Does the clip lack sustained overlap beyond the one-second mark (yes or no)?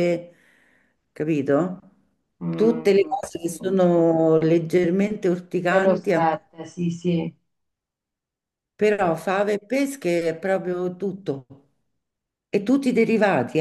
no